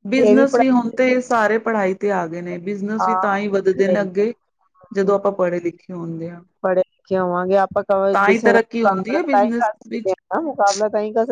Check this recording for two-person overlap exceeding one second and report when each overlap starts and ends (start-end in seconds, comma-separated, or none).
8.3-10.2